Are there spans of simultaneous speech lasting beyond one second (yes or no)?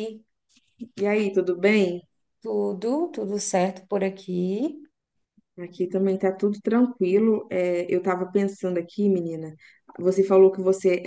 no